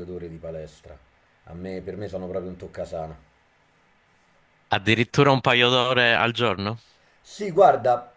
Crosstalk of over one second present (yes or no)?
no